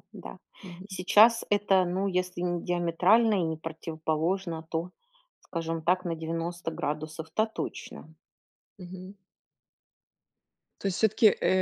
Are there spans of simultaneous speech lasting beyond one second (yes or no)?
no